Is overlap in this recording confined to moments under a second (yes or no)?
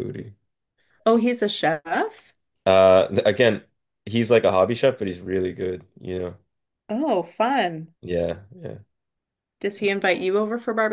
yes